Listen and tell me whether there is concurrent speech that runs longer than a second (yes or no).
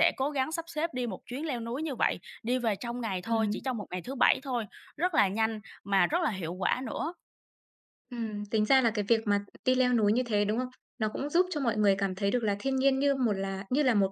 no